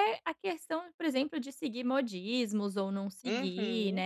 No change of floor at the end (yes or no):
yes